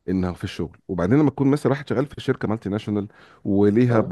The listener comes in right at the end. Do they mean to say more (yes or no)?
no